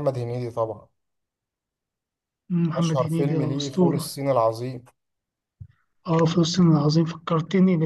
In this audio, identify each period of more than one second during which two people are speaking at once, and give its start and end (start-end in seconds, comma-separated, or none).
2.8-4.2